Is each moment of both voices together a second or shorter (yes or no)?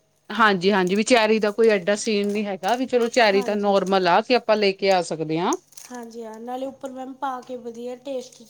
yes